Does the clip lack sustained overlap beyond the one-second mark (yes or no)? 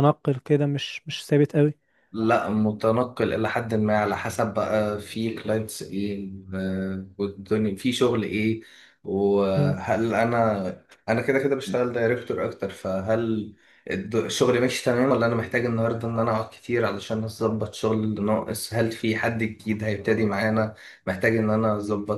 yes